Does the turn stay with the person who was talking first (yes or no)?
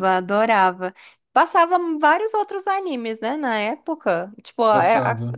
yes